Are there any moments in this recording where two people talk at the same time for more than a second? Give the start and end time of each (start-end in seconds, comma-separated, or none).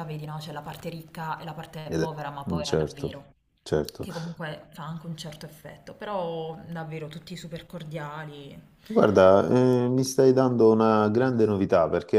1.9-3.2